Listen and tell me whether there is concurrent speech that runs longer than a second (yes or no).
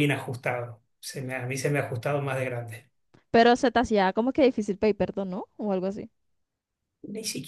no